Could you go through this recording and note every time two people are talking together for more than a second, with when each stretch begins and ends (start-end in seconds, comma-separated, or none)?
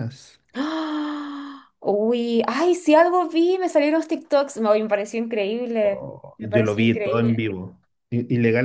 5.8-7.4